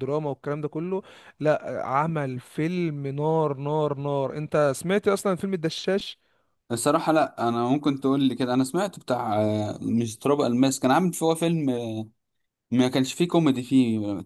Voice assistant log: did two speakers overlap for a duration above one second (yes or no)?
no